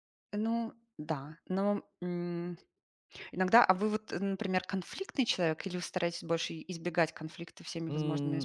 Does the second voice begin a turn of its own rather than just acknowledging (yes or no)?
yes